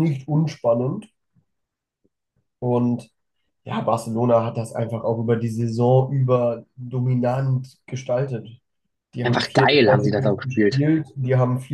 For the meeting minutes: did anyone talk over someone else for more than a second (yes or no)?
yes